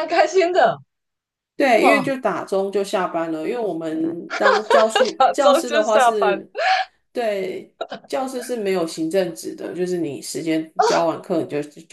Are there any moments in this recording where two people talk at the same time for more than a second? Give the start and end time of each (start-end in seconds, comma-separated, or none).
5.2-6.5